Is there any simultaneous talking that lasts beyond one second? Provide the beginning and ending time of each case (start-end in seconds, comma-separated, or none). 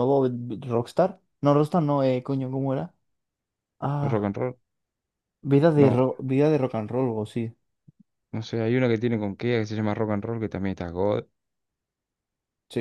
none